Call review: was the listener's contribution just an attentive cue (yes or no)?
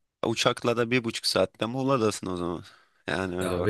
no